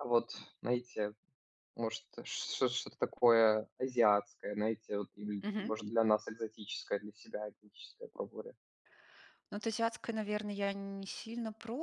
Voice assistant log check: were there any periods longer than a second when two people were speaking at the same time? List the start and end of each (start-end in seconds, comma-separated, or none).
none